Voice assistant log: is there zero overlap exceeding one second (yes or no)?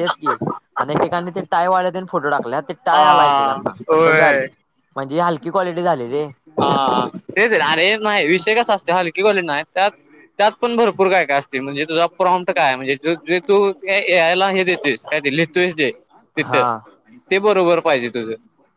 no